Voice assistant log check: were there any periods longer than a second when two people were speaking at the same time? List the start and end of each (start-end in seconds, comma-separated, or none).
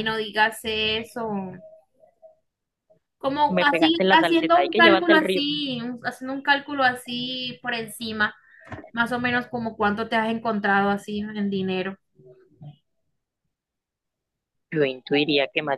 3.5-5.5